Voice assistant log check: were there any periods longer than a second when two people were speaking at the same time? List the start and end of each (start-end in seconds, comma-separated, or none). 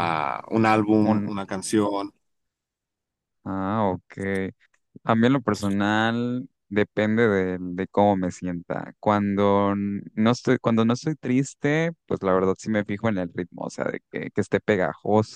none